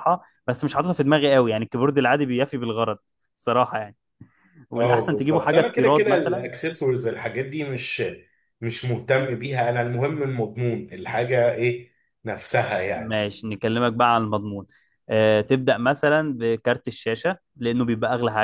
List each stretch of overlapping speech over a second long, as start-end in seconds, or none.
4.8-6.5